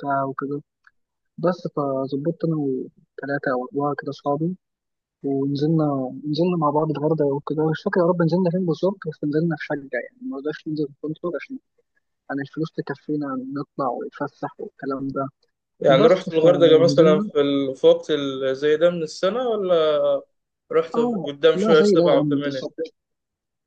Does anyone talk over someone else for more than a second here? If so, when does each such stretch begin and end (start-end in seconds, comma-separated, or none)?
15.9-17.3, 20.9-22.7